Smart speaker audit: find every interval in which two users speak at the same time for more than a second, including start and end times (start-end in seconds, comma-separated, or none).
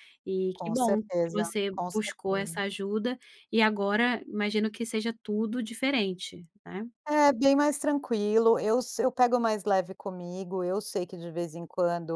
0.6-2.6